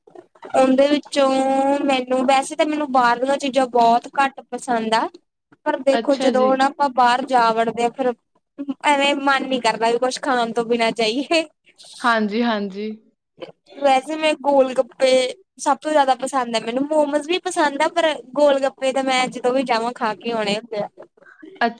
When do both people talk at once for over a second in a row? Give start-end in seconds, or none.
none